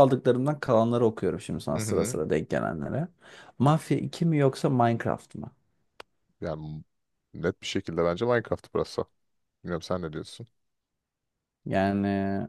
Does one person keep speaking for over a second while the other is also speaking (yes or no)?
no